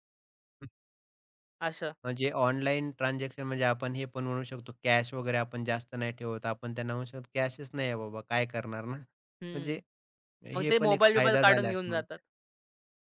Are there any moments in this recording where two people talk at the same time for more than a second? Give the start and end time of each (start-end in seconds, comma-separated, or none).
10.6-12.2